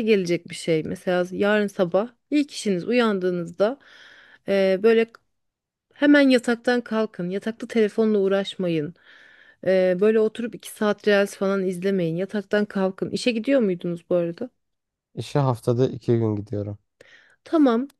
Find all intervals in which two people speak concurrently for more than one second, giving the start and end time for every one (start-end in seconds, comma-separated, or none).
none